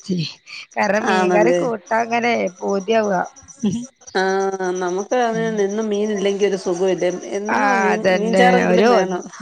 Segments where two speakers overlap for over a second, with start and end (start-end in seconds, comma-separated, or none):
none